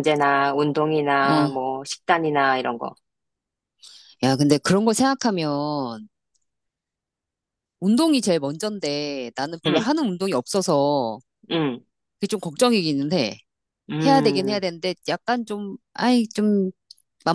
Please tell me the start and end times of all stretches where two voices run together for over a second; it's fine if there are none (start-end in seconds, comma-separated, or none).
none